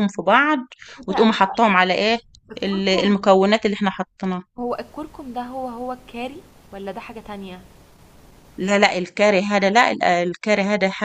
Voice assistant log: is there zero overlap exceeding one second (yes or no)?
yes